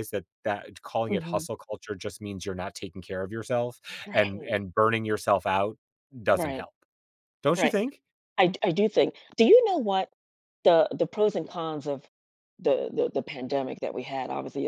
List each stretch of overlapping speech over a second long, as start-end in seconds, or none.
none